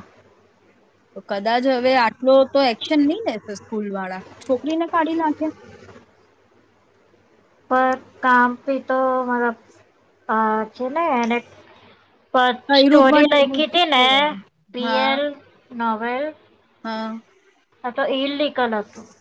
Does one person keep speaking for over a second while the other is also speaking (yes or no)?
yes